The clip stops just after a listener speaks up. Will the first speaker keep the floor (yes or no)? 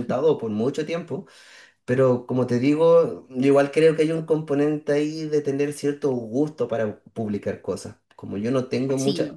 yes